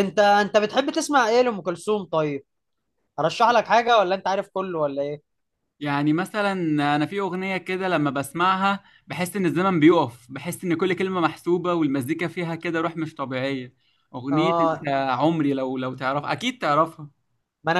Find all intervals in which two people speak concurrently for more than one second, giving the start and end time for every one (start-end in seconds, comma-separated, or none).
none